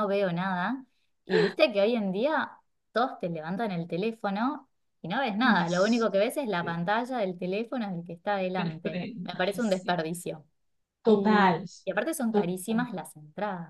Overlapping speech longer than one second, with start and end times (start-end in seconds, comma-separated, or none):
8.6-10.0